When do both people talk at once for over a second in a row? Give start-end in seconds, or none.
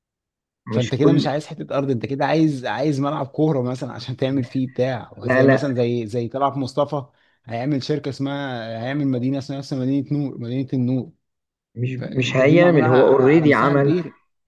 12.0-13.9